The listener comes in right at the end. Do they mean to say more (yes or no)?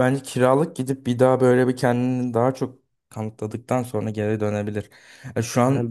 no